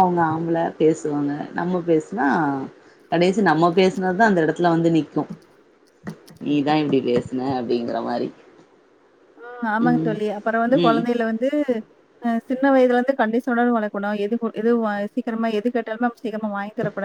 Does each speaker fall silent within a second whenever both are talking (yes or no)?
yes